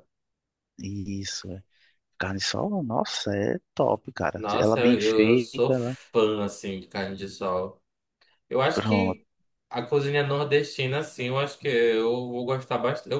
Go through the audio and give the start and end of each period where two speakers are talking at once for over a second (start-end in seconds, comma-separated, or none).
4.3-5.9